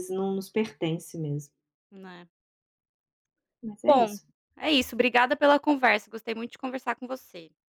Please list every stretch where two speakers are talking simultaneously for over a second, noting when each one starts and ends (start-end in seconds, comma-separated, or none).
none